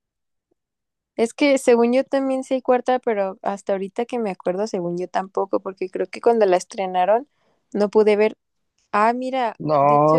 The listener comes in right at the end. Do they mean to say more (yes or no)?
yes